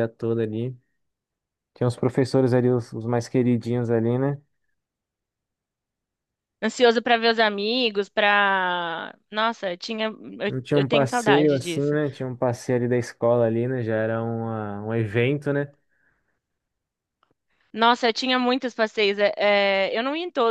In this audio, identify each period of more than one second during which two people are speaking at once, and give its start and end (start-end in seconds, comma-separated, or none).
10.5-12.0